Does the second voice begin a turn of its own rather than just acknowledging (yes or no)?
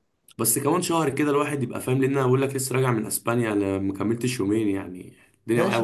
yes